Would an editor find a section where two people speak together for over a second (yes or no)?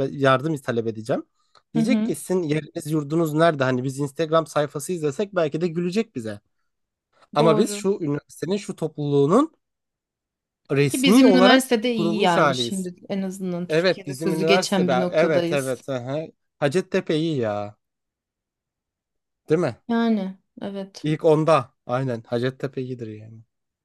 yes